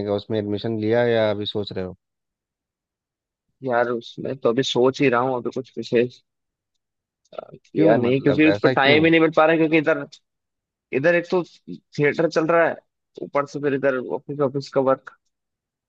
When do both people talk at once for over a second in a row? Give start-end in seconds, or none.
7.8-9.0